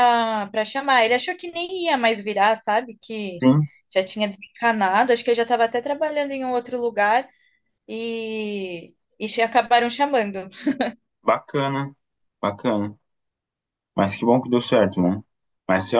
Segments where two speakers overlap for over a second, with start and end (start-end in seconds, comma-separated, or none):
none